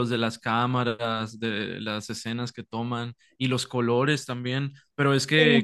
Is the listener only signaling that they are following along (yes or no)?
yes